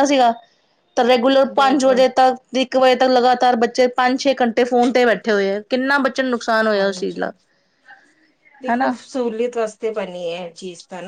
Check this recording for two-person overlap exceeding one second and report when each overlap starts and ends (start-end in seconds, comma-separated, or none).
none